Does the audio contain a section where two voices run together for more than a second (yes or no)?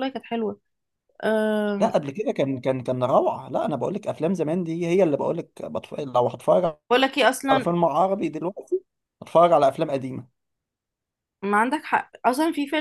no